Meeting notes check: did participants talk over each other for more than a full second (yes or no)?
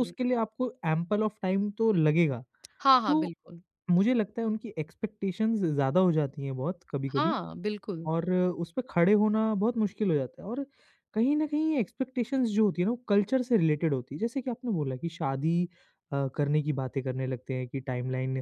no